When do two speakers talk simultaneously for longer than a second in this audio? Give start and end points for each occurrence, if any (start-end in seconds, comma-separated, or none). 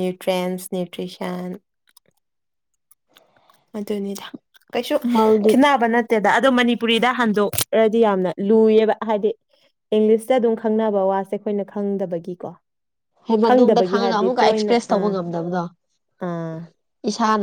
13.4-15.1